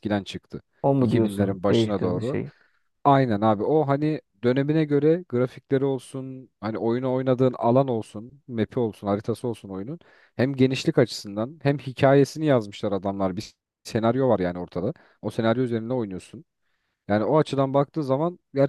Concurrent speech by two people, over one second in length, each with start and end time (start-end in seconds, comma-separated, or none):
1.0-2.4